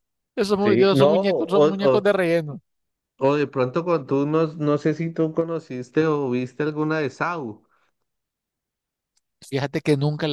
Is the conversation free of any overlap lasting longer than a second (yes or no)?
no